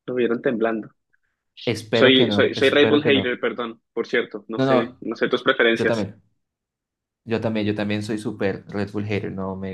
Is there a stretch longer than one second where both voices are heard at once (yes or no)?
yes